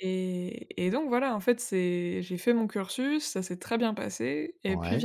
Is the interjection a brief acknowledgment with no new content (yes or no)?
yes